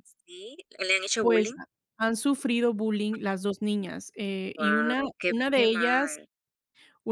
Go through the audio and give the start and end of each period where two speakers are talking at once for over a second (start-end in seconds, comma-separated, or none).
4.6-6.2